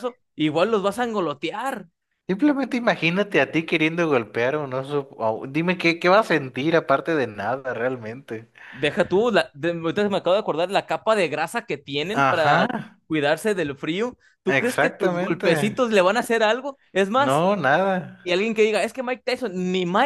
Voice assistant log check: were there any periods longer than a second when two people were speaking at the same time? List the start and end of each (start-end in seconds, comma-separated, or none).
14.5-15.8